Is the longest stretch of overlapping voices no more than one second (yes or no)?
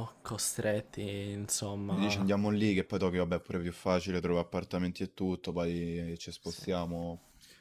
yes